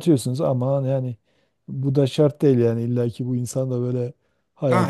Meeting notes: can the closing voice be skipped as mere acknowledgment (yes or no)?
no